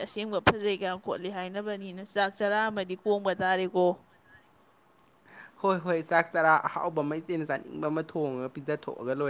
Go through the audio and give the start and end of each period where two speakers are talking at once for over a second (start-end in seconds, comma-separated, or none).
none